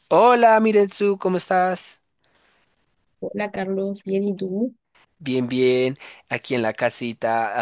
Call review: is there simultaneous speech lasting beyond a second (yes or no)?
no